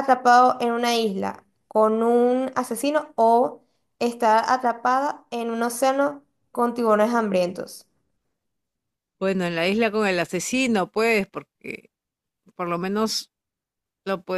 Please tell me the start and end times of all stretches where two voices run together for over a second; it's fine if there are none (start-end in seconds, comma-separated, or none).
none